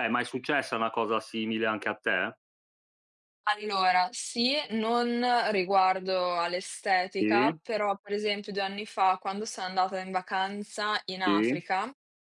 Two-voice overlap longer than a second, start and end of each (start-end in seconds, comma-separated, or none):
none